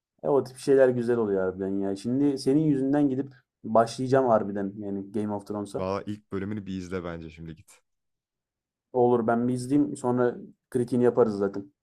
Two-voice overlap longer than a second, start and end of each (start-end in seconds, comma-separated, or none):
none